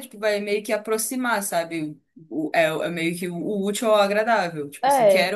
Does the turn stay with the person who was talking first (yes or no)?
yes